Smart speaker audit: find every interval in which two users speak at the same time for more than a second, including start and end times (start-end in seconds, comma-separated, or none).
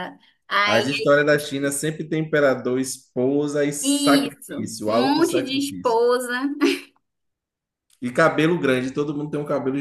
3.8-6.0